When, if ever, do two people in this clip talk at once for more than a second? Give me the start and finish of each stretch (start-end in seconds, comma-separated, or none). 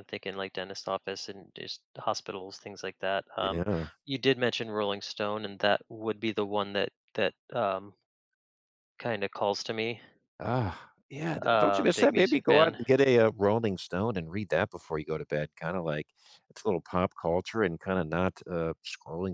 11.4-12.8